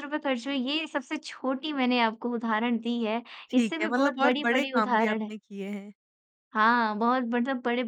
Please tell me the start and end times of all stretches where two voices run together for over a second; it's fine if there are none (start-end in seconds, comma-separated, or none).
3.5-5.3